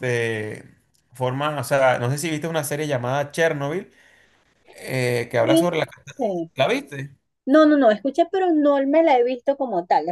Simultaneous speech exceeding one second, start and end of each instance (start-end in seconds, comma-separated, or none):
none